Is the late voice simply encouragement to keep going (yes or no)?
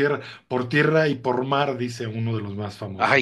no